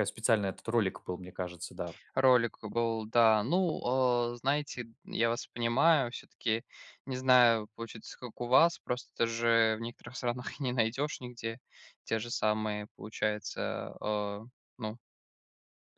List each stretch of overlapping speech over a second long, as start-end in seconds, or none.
none